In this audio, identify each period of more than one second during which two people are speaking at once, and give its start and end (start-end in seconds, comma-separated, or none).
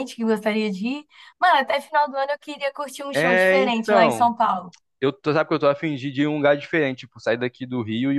3.1-4.3